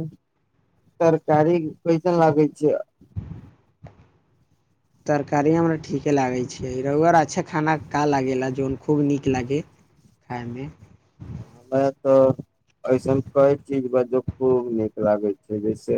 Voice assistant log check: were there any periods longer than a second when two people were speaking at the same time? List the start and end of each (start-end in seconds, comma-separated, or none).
none